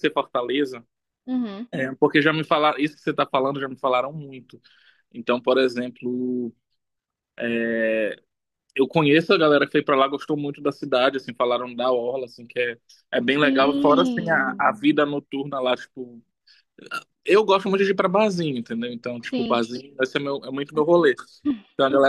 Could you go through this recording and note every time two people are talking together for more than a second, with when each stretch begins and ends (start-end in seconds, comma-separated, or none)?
13.4-14.7